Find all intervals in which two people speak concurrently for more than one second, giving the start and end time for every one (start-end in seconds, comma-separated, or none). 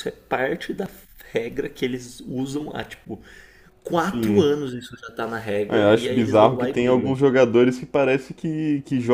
5.7-7.2